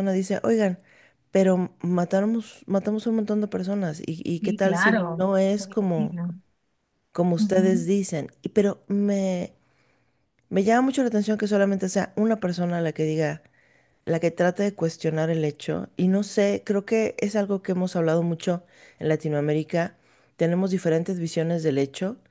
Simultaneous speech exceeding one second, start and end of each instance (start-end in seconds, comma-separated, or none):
4.4-6.2